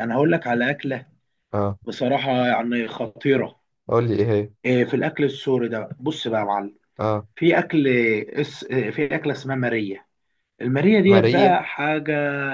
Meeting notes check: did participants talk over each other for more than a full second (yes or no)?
no